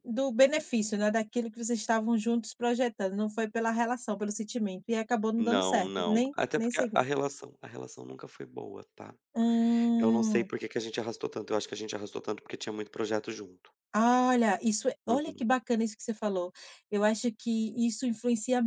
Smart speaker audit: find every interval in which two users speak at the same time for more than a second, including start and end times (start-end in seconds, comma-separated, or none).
5.4-7.0